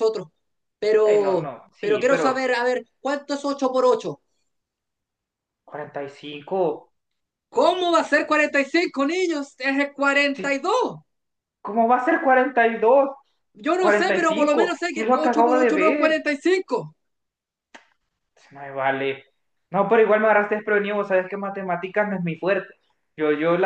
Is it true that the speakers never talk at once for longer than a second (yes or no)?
no